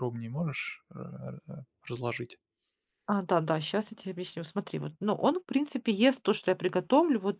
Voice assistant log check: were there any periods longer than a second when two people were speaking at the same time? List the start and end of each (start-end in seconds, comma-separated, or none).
none